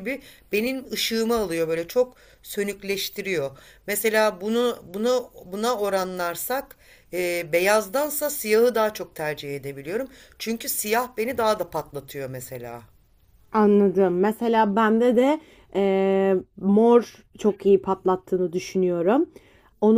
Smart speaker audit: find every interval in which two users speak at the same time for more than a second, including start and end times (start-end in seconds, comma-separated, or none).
none